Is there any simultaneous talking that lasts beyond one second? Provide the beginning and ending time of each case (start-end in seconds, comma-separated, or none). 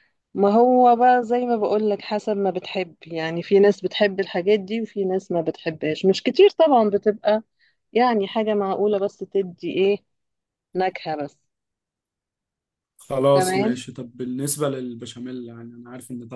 none